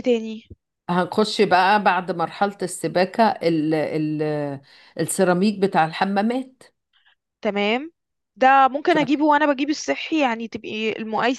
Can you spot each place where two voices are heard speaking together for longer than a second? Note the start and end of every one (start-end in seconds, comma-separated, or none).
none